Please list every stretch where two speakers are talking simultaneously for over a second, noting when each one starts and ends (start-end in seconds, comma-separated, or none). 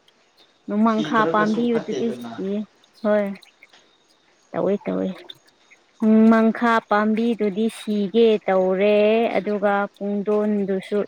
0.9-2.4